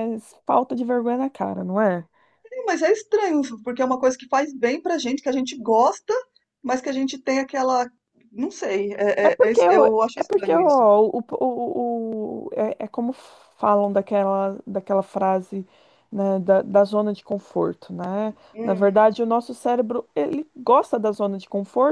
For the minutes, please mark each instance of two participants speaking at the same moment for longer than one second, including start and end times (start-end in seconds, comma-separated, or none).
9.2-10.9